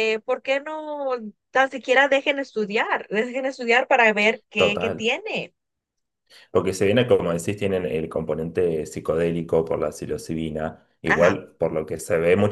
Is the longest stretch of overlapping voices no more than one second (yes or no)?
yes